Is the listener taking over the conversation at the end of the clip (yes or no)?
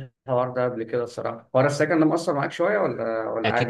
yes